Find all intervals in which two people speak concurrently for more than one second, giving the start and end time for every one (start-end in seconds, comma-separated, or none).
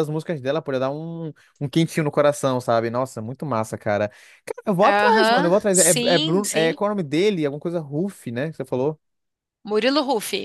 4.8-6.8